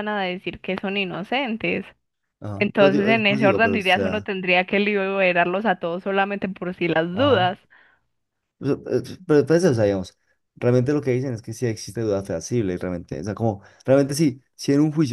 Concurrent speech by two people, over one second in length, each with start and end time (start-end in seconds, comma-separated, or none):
2.6-4.3